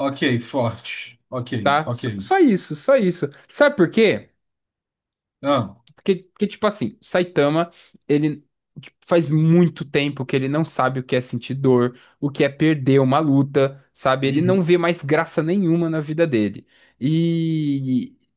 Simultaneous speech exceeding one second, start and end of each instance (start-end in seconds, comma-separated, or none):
none